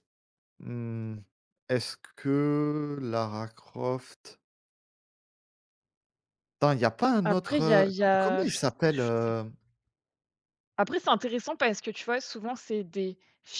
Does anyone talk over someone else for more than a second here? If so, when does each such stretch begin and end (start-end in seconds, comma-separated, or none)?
7.2-9.1